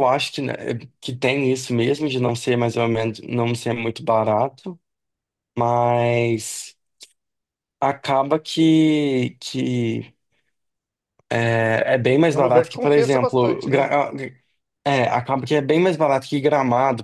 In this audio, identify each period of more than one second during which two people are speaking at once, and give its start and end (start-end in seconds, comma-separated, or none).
12.3-13.9